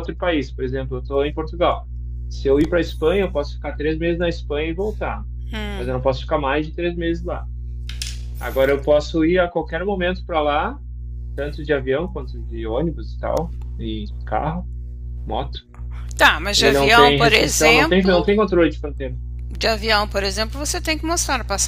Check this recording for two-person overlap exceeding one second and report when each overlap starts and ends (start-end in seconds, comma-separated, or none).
16.6-18.3